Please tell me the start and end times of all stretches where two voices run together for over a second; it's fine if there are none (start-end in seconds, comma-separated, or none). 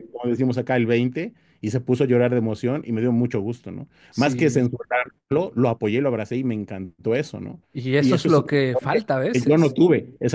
8.0-9.8